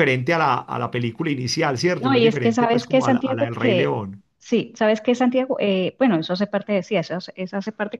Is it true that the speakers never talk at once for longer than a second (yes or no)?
no